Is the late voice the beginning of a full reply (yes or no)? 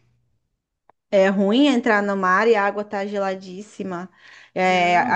no